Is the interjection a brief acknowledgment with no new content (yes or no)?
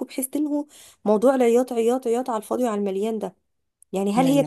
yes